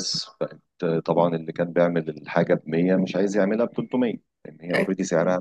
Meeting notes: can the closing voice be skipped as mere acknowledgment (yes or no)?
yes